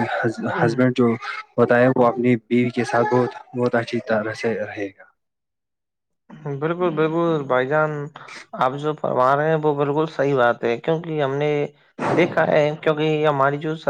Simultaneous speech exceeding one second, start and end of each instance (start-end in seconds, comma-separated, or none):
none